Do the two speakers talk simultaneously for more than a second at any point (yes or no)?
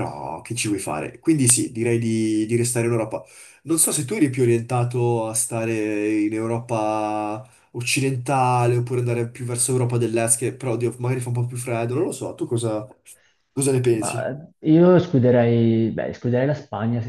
no